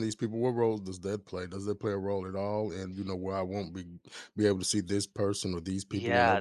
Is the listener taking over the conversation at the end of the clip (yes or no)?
yes